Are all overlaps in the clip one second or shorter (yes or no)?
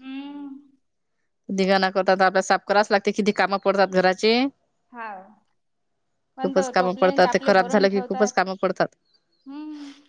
no